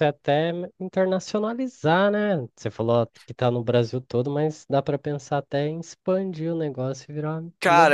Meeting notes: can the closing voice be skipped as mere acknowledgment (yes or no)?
no